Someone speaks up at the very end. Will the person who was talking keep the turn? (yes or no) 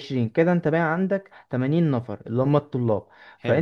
yes